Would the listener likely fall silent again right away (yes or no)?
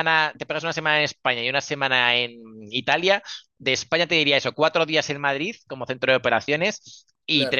yes